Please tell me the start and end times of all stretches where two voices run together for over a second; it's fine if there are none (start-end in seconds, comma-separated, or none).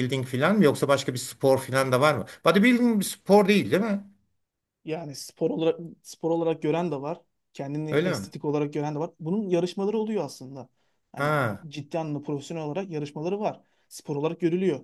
none